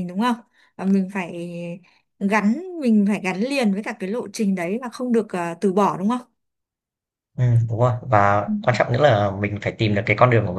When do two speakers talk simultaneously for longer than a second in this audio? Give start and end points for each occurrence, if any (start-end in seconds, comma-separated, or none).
none